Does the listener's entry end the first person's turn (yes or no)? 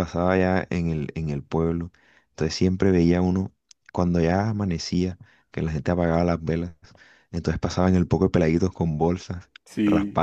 no